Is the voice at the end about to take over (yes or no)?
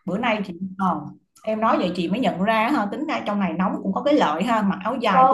yes